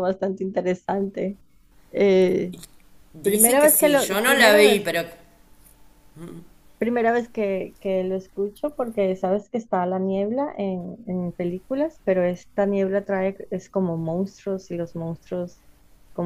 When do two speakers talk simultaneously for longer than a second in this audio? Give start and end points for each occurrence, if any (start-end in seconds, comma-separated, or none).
3.3-4.9